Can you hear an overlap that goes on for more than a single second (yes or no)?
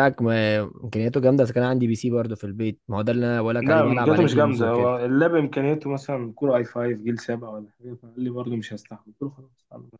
yes